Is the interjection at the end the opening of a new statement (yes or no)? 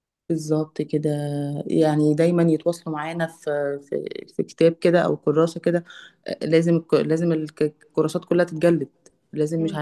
no